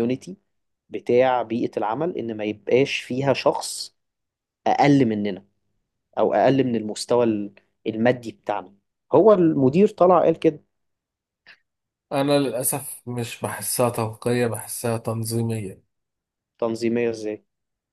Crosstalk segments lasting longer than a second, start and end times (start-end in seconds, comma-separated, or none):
none